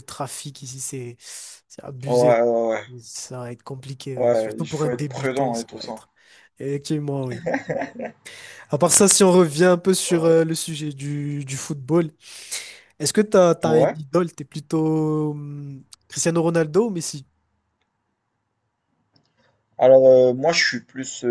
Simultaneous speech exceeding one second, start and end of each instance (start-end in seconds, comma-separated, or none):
4.2-6.0